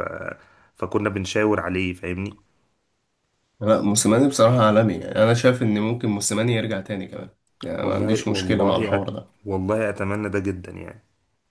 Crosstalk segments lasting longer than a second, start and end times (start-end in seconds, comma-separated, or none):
7.8-9.1